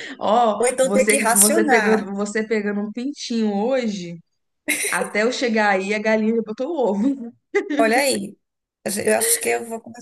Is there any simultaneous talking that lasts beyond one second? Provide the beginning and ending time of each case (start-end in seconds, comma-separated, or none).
0.6-2.1